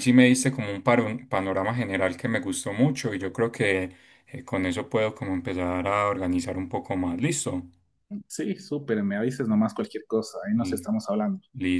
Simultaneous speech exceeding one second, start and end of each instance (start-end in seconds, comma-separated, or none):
none